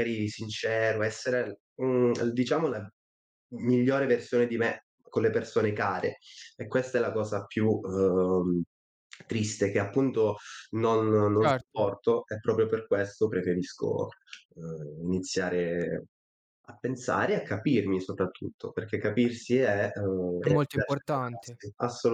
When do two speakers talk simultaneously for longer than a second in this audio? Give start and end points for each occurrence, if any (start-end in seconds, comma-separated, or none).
20.4-21.6